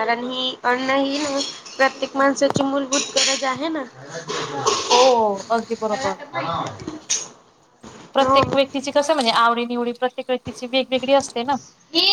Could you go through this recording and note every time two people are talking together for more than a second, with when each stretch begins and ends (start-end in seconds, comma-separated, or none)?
none